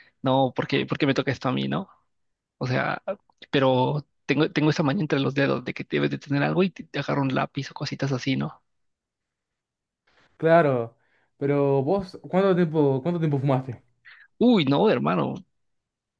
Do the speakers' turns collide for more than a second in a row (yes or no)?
no